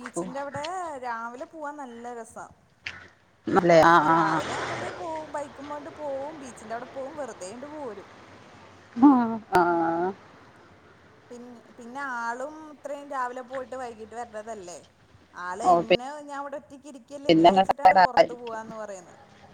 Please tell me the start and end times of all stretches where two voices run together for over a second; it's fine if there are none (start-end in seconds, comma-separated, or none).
17.1-18.6